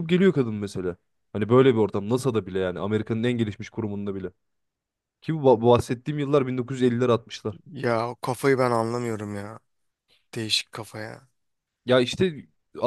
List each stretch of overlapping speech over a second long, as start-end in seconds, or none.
none